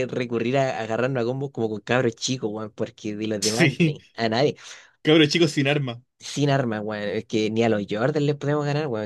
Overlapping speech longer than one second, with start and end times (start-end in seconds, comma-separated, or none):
none